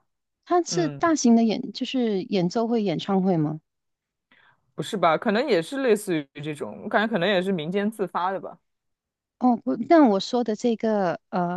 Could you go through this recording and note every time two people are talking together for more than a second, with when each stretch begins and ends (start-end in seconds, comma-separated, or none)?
none